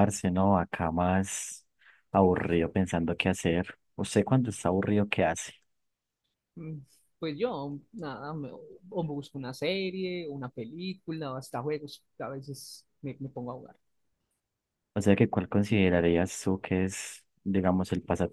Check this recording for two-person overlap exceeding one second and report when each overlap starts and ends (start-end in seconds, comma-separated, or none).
none